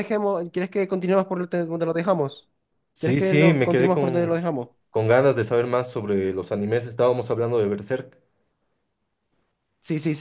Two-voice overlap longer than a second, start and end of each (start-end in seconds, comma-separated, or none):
3.0-4.4